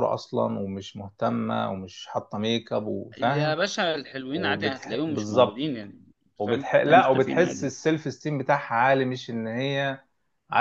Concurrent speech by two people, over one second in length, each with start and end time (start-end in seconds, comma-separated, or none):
4.3-5.7, 6.5-7.7